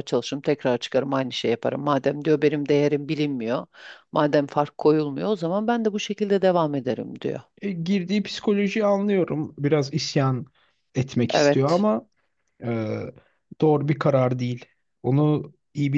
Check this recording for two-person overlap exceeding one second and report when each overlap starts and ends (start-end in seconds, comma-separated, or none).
none